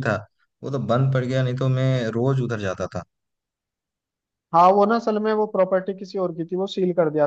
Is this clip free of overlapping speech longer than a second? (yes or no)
yes